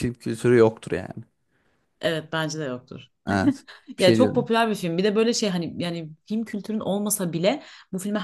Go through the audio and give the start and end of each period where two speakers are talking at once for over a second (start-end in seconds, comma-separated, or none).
none